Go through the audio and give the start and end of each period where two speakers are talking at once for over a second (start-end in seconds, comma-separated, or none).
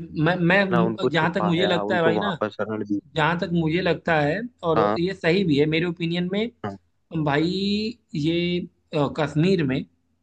0.7-2.3